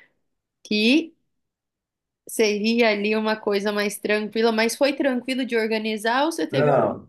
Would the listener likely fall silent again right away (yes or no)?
no